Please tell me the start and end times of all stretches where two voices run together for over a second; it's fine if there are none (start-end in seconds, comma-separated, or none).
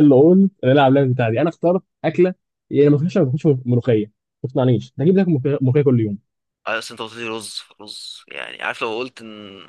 none